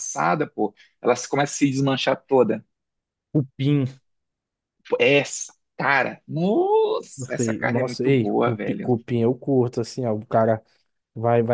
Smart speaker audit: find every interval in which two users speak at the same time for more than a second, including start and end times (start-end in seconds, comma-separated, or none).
7.2-8.9